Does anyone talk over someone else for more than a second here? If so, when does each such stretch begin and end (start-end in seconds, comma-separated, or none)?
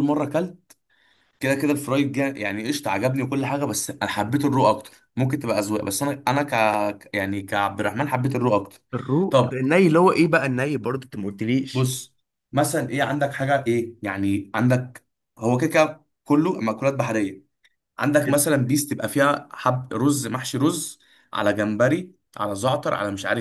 none